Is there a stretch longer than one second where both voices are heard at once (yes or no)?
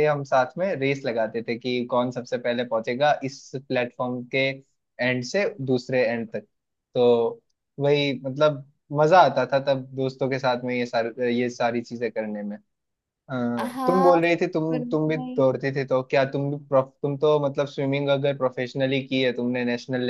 yes